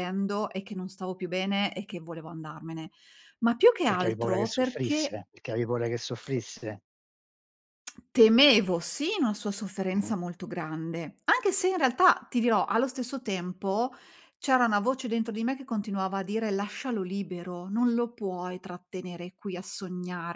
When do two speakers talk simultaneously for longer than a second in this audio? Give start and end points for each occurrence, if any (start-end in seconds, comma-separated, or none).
3.9-5.2